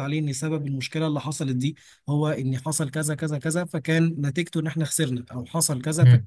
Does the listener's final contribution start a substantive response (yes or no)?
yes